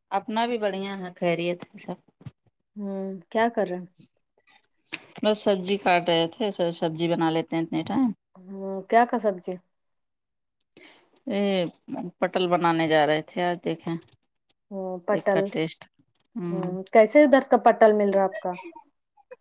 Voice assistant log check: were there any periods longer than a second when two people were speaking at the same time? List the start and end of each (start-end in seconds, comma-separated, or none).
none